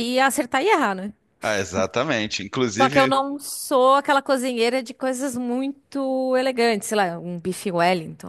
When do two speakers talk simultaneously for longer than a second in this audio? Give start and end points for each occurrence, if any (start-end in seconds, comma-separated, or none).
none